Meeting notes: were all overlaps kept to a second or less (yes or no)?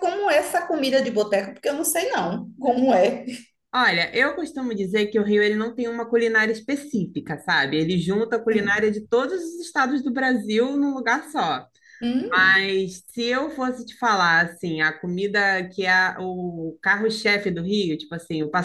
yes